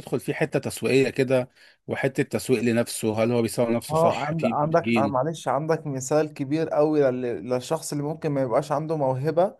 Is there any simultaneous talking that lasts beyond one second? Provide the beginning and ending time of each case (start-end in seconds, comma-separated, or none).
3.9-5.2